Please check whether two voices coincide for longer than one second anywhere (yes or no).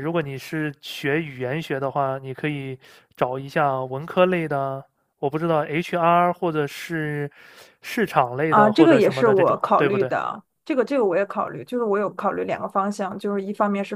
yes